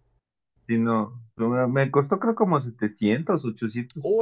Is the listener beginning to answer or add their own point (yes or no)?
yes